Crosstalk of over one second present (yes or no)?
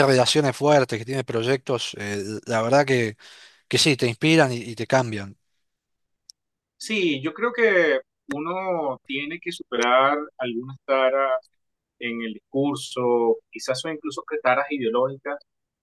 no